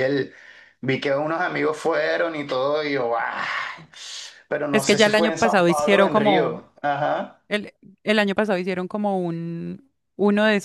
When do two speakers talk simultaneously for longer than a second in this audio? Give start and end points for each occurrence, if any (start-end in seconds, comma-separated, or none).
4.7-6.6